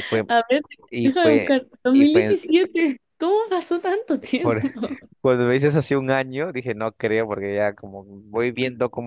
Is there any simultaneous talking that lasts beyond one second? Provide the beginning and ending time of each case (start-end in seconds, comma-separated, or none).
1.0-2.4